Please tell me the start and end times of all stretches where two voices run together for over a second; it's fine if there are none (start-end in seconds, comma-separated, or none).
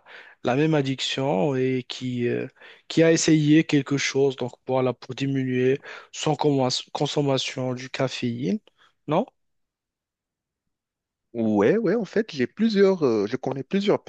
none